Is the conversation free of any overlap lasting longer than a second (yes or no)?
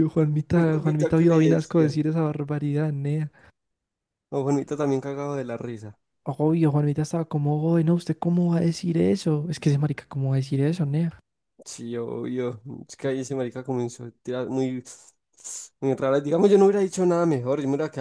no